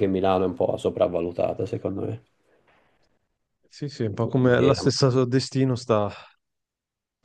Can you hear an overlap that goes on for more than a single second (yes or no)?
no